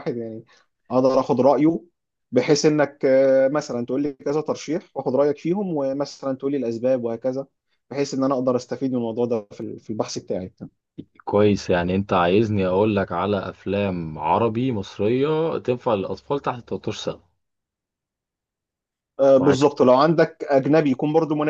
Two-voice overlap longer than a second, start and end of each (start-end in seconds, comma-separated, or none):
none